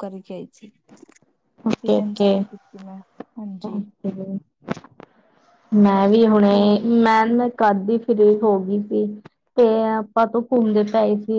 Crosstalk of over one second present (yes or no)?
no